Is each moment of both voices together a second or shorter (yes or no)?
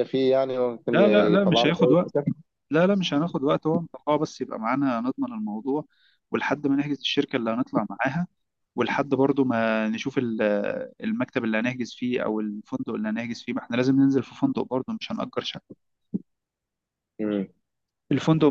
no